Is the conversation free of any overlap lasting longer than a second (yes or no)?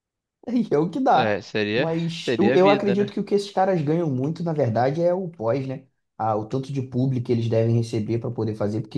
no